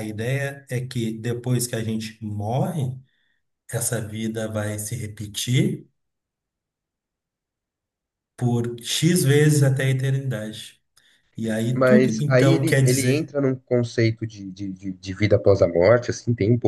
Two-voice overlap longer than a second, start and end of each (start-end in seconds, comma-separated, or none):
11.7-13.3